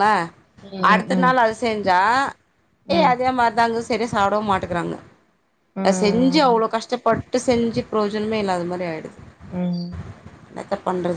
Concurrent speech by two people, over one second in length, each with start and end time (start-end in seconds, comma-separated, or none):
none